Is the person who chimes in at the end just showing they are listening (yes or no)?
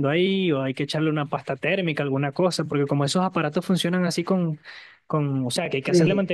yes